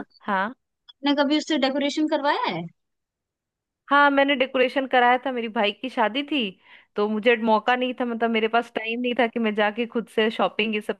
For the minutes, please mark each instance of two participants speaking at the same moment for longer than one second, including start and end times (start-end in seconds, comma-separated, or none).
none